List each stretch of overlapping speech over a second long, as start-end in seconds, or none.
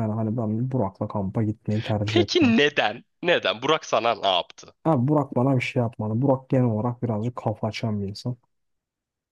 none